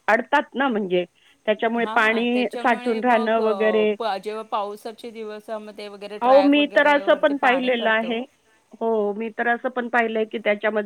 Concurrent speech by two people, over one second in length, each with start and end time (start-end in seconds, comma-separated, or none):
1.8-3.4, 6.2-8.1